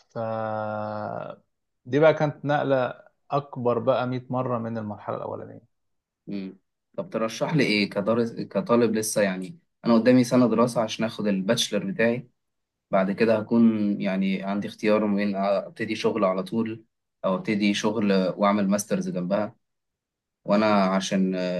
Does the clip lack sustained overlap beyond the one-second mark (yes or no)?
yes